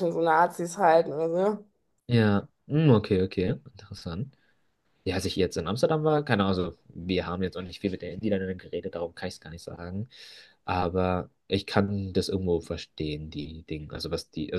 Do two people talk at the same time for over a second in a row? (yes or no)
no